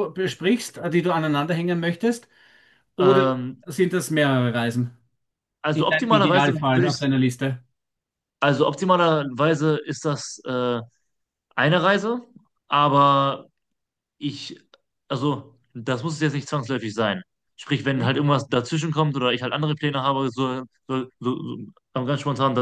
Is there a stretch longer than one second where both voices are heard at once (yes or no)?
yes